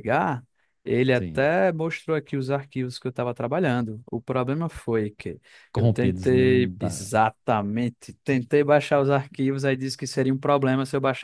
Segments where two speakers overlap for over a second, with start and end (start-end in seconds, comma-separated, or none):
5.8-7.1